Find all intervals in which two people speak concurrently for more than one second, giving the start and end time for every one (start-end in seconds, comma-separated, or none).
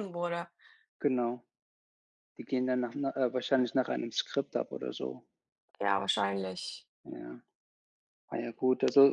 none